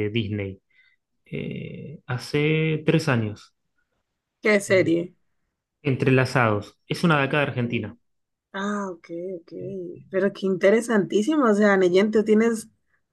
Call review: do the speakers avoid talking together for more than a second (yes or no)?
yes